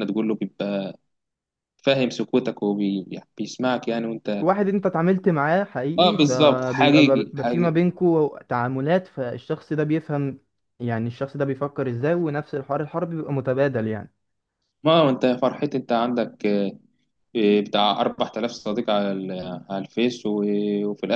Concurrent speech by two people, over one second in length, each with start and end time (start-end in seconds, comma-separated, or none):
6.0-7.8